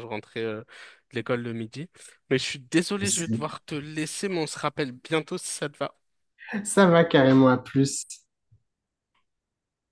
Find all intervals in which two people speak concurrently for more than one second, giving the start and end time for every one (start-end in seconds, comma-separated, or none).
none